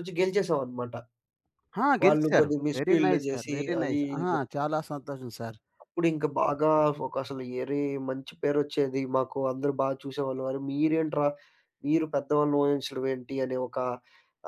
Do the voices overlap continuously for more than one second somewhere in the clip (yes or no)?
yes